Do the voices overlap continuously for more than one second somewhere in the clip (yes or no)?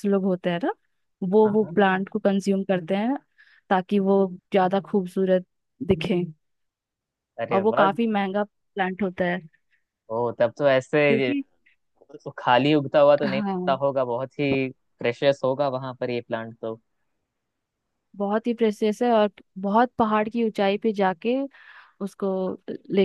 no